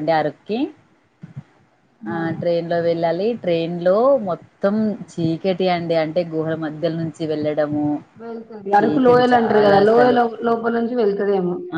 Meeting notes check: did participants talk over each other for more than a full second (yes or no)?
yes